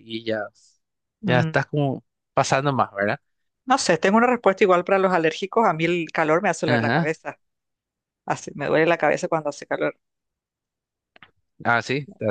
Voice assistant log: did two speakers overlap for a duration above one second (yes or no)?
no